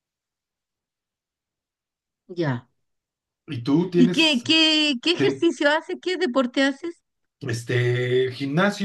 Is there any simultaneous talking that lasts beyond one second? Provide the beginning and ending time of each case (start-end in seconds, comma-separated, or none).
none